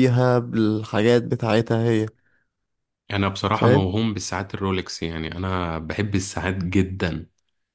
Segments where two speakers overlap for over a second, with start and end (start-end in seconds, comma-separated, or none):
none